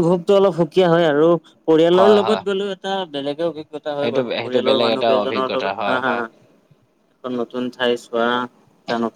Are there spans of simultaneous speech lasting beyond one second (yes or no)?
yes